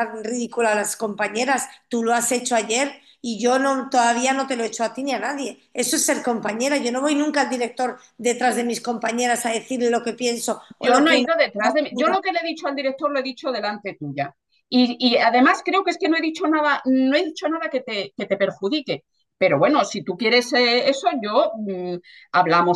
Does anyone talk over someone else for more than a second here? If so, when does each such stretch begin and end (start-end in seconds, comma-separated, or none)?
none